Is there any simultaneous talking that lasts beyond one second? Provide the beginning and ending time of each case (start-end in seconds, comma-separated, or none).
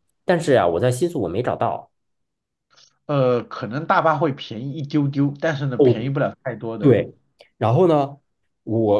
none